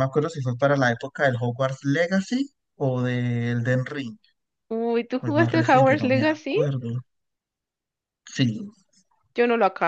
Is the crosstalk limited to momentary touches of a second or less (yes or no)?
no